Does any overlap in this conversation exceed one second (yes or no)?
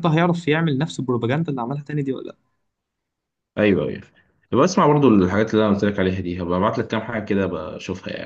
no